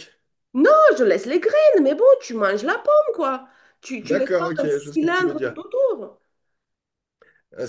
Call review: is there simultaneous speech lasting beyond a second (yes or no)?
yes